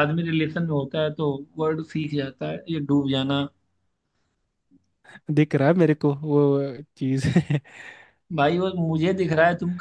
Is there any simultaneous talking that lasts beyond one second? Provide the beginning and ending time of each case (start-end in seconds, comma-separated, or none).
none